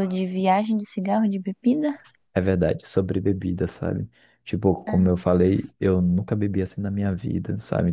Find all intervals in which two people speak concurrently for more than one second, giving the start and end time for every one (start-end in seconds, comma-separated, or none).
none